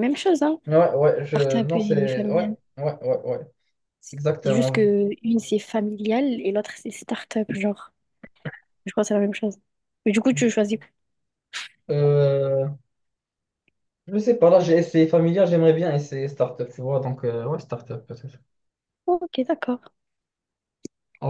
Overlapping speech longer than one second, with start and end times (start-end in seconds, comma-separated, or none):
1.3-2.6